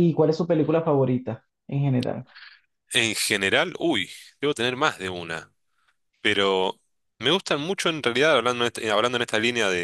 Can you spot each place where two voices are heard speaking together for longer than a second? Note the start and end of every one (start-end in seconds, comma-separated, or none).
none